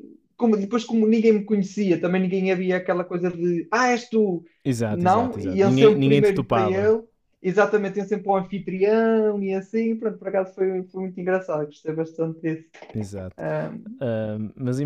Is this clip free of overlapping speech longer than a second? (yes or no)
no